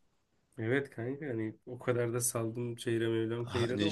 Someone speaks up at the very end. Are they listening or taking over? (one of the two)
taking over